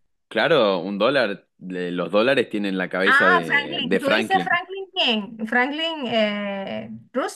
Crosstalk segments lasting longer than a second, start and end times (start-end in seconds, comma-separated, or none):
3.1-4.5